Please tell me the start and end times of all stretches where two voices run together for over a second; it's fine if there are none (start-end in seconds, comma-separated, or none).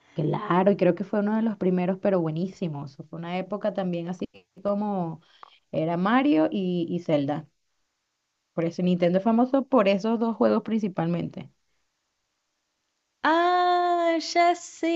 none